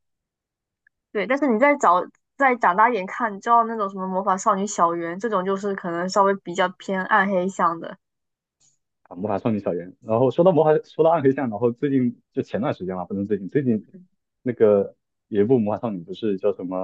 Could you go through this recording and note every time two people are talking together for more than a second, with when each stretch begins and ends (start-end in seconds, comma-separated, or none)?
none